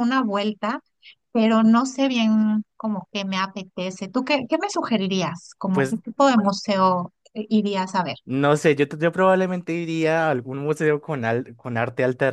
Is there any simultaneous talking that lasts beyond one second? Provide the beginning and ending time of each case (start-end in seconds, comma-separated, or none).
none